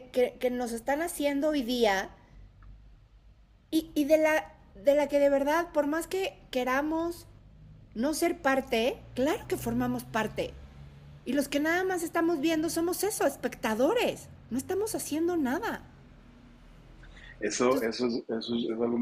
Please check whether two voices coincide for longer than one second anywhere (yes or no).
no